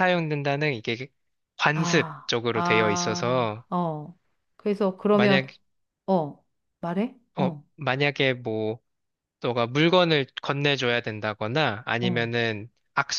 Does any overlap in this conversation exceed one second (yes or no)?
yes